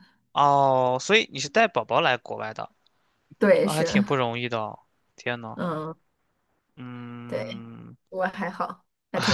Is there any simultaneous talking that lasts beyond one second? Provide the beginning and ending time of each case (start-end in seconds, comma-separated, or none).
none